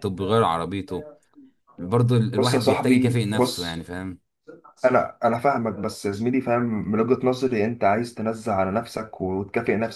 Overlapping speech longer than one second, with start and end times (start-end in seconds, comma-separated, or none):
2.4-3.8